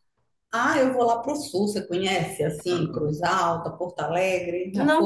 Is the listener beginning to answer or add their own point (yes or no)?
yes